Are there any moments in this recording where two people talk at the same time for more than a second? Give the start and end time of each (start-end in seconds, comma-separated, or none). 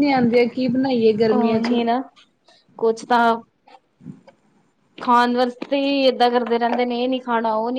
none